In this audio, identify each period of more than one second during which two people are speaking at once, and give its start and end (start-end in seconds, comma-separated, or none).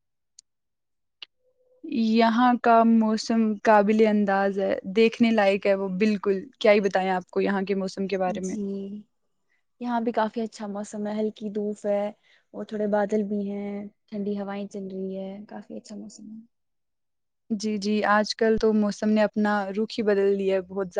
none